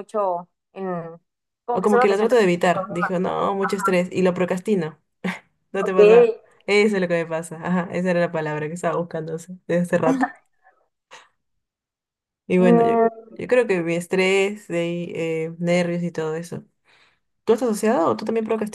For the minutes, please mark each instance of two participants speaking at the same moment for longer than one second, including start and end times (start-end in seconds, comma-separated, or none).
1.8-3.2